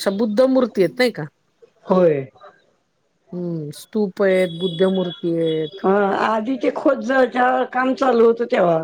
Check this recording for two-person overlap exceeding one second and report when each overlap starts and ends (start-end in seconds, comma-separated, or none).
none